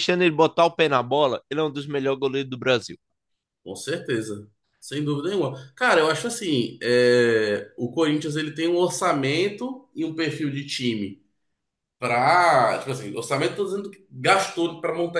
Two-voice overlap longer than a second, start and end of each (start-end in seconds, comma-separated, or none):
none